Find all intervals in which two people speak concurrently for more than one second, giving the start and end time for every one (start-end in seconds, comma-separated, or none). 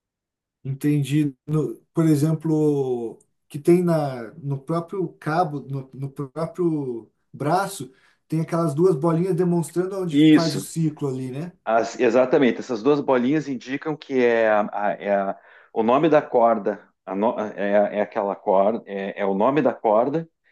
none